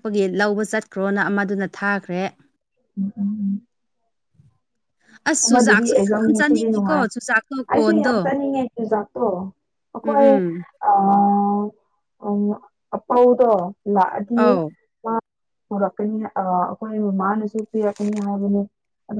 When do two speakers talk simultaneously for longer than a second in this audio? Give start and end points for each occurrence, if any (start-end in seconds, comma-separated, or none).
5.5-7.0